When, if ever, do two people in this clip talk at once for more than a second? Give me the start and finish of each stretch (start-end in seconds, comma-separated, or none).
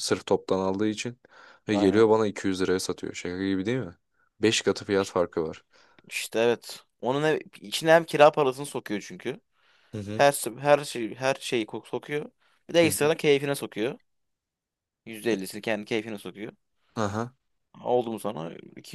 none